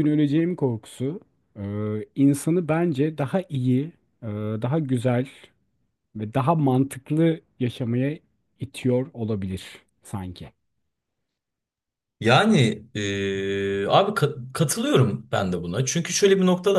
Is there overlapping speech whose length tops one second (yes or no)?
no